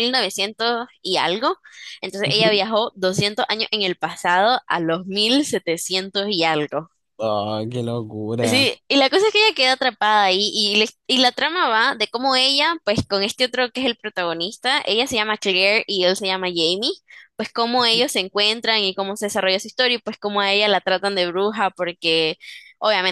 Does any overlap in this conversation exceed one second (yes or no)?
no